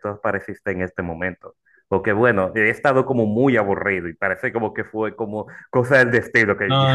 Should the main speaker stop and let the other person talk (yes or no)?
yes